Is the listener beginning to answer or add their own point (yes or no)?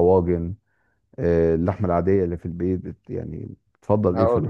yes